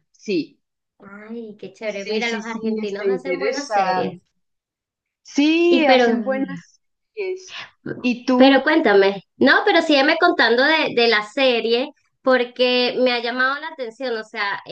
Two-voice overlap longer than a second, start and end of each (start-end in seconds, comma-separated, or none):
1.8-4.2